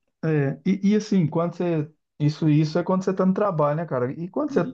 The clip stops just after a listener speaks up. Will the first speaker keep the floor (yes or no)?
yes